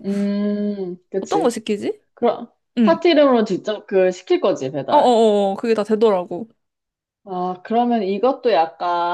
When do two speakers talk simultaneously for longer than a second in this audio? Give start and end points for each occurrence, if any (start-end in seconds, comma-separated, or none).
none